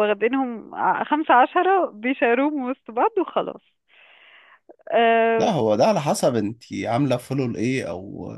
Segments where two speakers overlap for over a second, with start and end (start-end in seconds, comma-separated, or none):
none